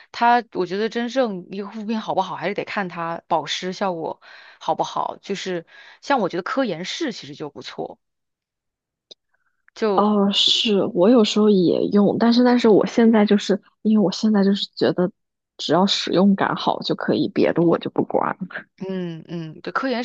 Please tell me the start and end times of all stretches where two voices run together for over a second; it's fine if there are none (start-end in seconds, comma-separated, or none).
none